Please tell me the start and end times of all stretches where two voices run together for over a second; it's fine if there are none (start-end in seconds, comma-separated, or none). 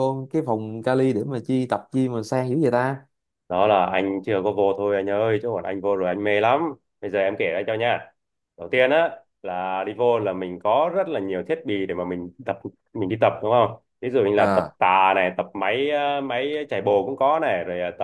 none